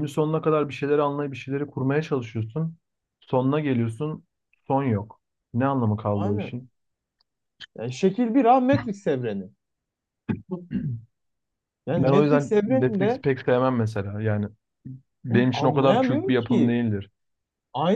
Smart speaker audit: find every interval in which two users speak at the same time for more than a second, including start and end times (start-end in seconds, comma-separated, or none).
12.0-13.2, 15.3-16.8